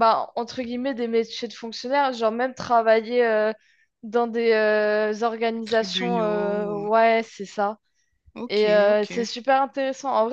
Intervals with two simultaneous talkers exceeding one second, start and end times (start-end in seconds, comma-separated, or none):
5.6-6.9